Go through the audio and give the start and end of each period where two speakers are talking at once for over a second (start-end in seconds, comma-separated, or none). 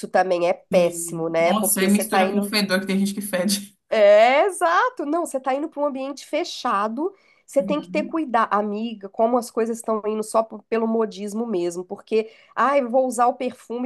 0.7-2.4